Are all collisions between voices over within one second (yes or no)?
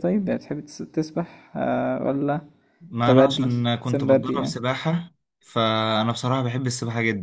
no